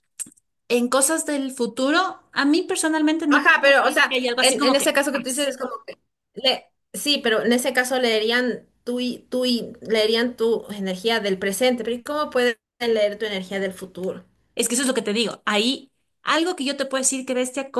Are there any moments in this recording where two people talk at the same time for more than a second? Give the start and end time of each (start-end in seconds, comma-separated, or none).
3.3-5.5